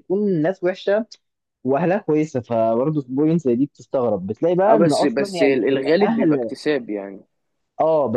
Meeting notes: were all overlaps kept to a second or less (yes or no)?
no